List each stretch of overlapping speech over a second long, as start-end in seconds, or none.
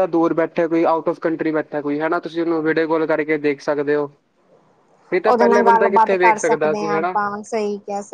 5.3-7.1